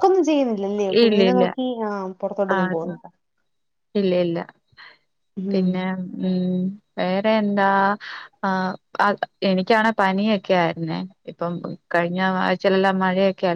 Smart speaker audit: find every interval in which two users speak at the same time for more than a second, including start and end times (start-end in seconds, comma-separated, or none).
none